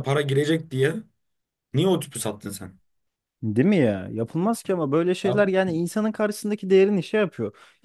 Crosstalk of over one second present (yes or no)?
no